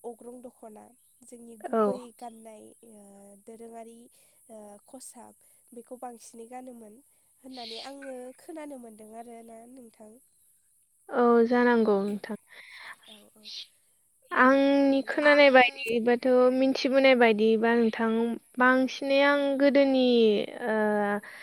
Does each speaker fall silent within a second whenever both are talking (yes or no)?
no